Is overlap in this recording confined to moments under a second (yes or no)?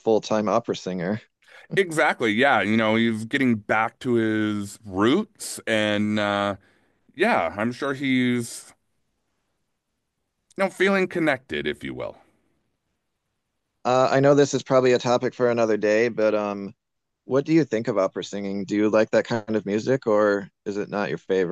yes